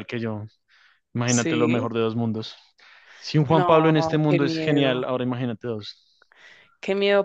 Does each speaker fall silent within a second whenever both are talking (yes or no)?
no